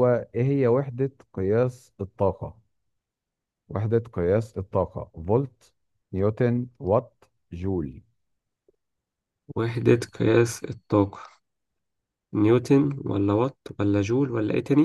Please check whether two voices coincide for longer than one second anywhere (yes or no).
no